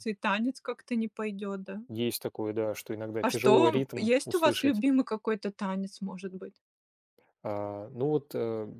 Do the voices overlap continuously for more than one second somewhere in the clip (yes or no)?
yes